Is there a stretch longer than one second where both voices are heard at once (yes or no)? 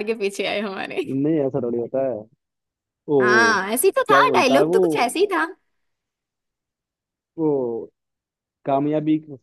yes